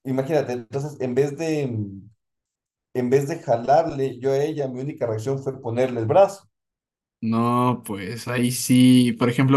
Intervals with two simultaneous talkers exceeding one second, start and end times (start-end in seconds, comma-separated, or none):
none